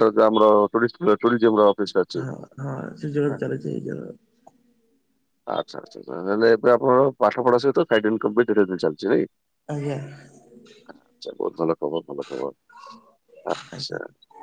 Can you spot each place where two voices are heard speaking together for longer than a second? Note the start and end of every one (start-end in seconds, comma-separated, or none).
none